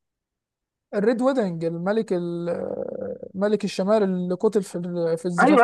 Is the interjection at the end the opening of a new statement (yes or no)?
yes